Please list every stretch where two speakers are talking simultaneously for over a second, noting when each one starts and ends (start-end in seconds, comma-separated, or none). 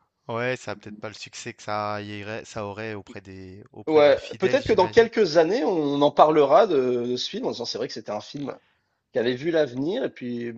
3.9-5.1